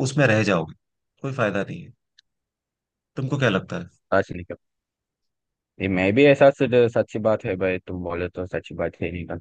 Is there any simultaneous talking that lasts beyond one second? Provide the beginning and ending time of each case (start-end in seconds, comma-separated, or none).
none